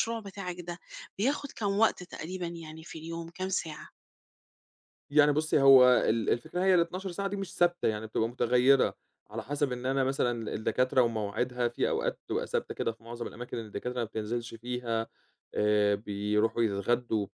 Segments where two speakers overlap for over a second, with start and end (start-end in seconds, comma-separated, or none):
none